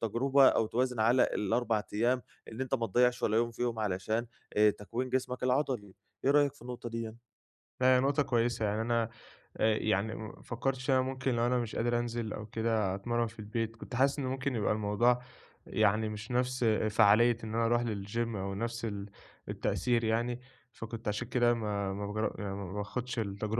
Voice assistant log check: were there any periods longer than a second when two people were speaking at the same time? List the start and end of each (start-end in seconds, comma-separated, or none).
none